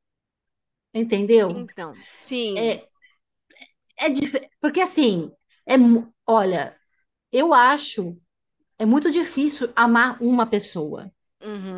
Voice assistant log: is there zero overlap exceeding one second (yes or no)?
yes